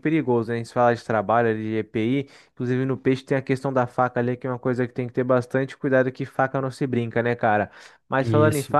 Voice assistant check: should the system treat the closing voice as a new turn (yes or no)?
no